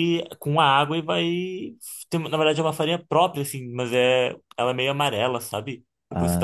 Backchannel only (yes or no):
yes